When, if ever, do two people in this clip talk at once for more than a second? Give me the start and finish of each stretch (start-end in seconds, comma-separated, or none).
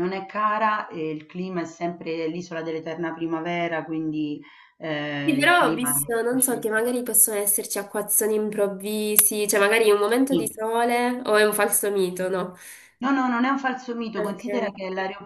5.2-6.7